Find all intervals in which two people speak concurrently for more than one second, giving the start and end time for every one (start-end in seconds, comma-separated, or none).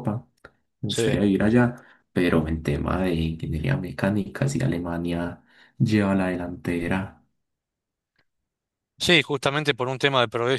none